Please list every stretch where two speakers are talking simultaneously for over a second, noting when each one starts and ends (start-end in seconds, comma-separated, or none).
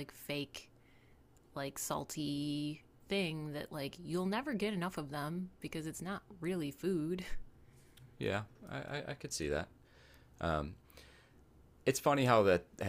none